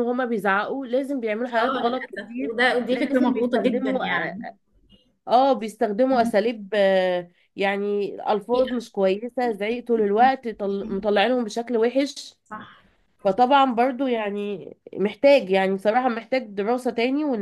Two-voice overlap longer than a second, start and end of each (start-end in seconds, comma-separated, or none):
1.6-4.0